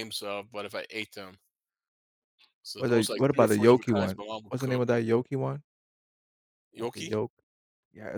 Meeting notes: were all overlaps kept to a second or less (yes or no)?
no